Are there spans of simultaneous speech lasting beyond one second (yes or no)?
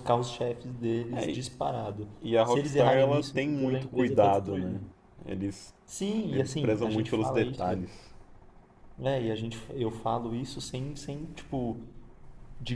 yes